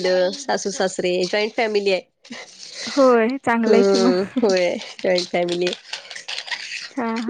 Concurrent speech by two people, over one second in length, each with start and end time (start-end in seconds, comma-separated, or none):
none